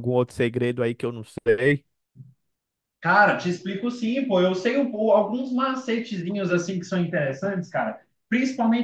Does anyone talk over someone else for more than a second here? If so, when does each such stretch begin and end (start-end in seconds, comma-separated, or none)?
none